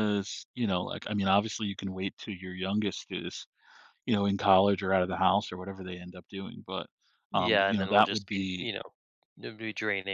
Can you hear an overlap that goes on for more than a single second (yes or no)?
yes